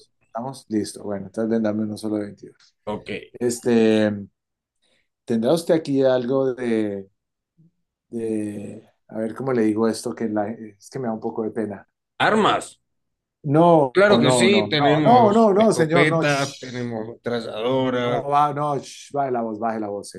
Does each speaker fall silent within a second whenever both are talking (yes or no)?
no